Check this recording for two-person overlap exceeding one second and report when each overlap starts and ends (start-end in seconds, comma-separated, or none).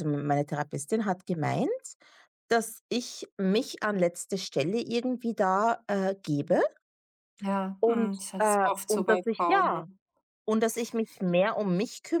7.8-9.8